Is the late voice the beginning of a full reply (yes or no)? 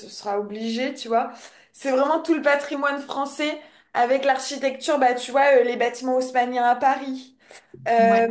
no